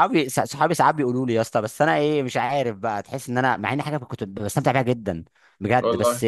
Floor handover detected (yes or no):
no